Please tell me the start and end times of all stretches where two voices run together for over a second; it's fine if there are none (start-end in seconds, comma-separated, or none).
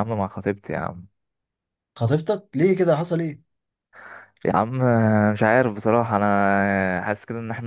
none